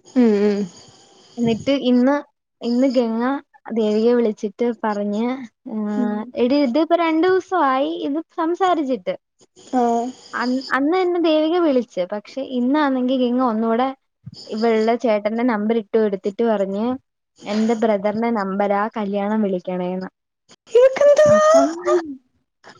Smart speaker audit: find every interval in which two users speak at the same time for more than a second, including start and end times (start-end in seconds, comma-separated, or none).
none